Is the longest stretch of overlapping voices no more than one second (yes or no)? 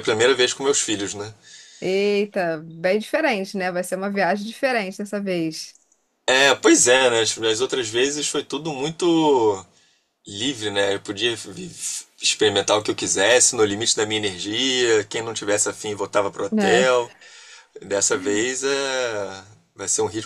yes